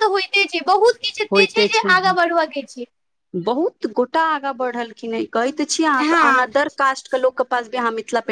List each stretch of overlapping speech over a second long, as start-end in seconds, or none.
none